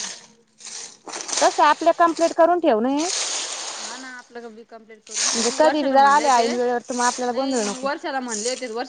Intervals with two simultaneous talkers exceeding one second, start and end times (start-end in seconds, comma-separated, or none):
5.3-7.9